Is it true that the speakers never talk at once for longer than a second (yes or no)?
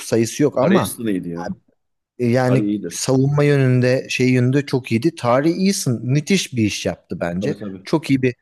yes